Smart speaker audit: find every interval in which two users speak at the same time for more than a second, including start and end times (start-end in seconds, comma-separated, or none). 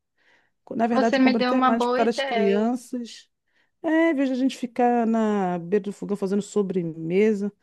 0.9-2.7